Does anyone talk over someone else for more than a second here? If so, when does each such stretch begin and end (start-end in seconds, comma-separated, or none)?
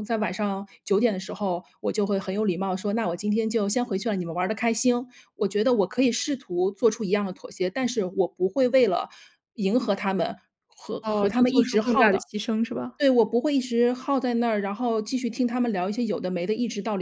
11.0-12.2